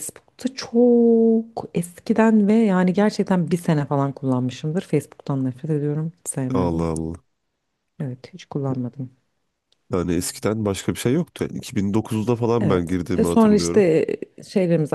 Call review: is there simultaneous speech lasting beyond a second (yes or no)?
yes